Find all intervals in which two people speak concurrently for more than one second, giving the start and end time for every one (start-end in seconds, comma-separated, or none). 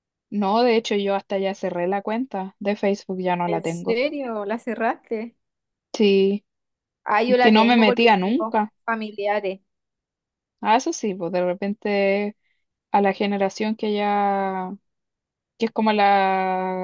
7.4-8.7